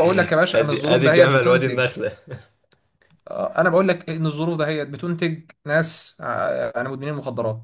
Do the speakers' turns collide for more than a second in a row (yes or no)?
yes